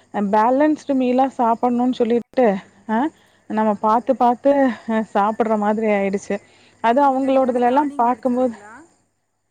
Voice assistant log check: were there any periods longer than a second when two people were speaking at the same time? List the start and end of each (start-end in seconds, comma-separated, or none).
6.9-8.5